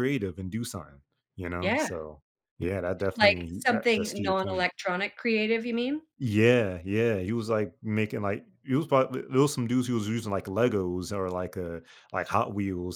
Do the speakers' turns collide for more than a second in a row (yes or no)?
yes